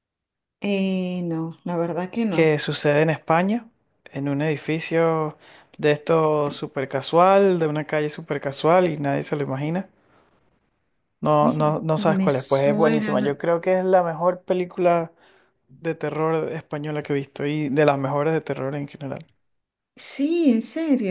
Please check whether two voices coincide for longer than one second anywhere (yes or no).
yes